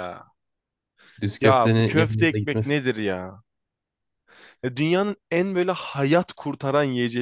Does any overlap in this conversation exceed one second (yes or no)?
yes